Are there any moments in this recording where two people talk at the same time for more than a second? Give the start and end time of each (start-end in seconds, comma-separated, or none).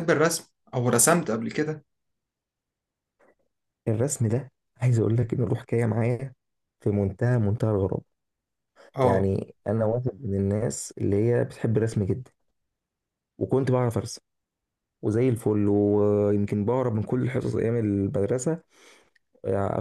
none